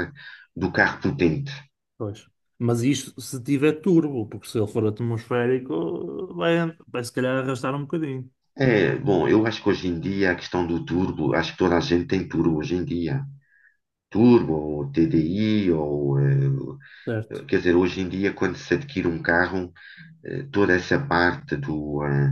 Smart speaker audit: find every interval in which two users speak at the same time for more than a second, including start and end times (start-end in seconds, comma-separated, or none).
none